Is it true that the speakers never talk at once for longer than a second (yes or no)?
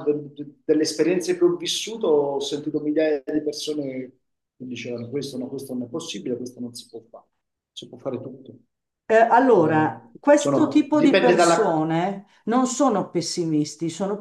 no